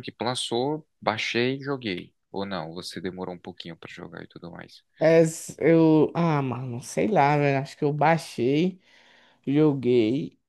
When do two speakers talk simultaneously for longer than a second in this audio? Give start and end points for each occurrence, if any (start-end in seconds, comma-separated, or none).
none